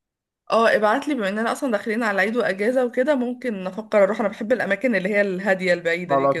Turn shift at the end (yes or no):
yes